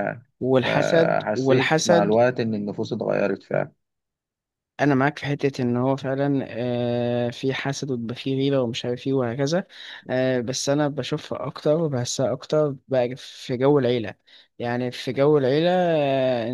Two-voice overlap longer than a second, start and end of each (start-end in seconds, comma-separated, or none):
0.6-2.2